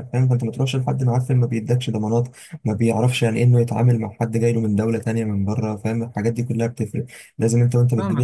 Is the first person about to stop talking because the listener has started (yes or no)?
yes